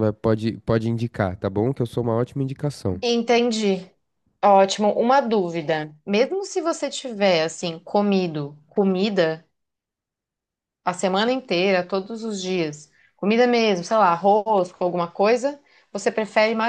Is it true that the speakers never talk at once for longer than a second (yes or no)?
yes